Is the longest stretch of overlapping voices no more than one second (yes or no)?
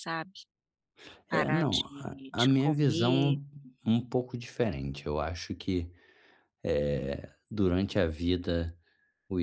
no